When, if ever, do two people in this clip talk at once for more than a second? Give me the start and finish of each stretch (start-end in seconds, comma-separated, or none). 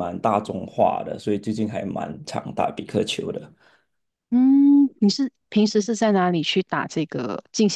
none